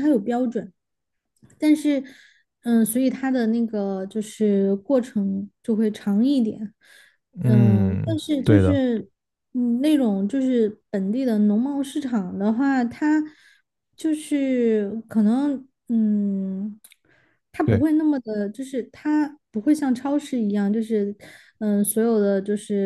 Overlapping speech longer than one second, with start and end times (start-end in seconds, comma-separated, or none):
7.4-8.8